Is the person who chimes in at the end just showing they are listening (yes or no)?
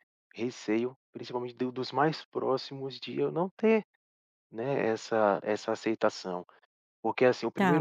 no